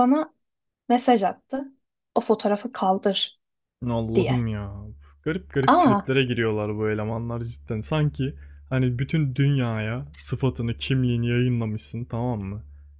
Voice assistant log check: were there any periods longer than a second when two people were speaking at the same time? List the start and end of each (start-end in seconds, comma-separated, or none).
none